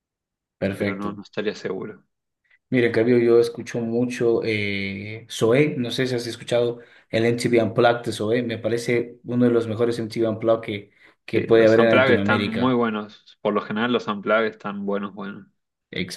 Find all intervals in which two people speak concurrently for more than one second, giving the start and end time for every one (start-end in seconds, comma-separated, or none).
11.3-12.8